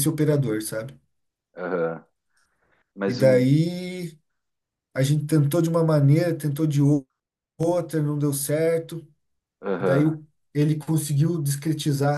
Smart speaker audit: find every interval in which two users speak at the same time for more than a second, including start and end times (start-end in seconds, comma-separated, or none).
none